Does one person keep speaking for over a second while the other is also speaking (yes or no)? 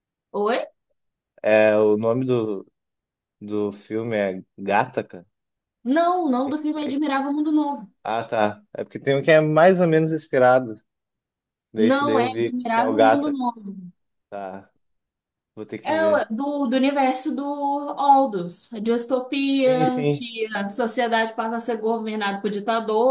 yes